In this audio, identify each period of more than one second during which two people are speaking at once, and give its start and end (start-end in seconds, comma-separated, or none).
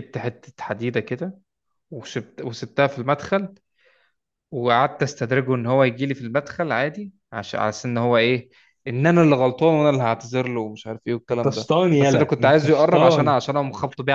11.3-13.4